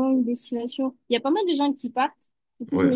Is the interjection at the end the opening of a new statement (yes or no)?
no